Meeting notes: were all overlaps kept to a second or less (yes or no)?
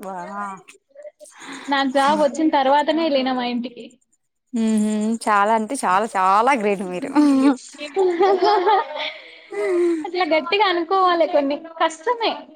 yes